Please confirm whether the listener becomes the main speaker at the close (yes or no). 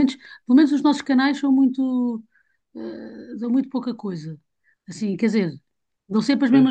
no